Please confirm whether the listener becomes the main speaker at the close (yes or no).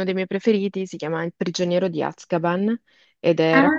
no